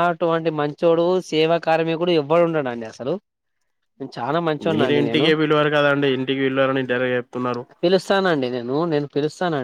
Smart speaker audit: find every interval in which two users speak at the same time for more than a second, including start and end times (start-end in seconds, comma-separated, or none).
none